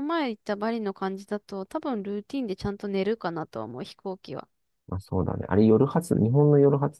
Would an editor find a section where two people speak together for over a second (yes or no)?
no